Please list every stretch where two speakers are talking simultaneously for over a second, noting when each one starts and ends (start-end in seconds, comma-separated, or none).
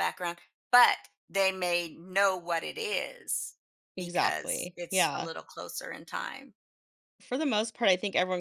4.0-5.3